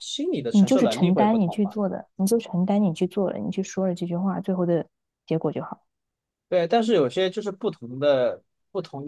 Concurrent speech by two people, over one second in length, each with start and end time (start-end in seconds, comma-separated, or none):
0.5-1.8